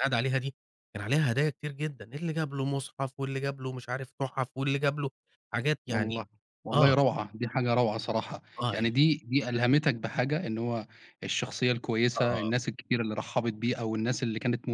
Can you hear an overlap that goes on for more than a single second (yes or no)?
no